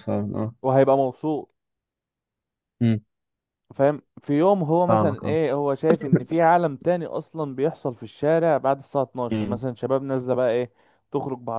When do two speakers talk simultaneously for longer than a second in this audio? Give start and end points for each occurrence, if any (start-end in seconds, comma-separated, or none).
none